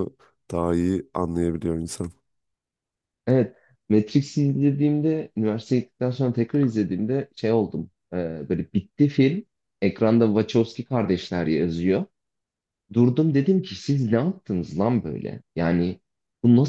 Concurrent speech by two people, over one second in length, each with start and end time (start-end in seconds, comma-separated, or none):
none